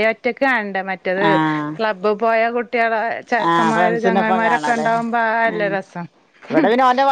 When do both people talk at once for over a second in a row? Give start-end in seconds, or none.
3.5-4.9